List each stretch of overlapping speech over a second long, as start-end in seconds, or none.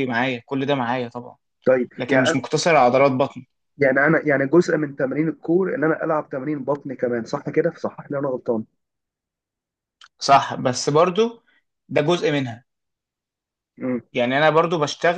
none